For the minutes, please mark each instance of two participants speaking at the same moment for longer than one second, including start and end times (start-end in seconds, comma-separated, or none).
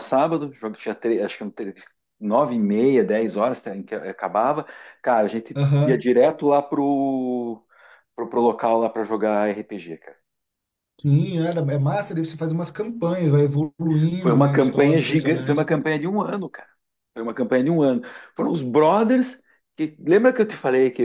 14.2-15.7